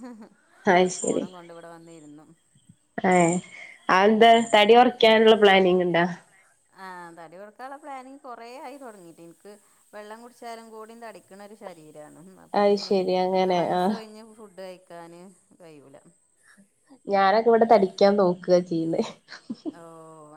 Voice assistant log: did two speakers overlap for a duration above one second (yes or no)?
no